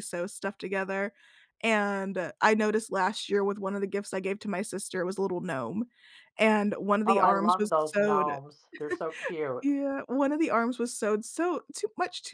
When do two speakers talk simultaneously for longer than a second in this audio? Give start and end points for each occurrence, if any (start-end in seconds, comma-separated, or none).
7.1-8.3